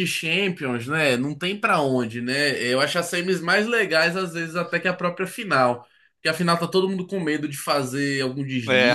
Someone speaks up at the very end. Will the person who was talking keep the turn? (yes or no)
yes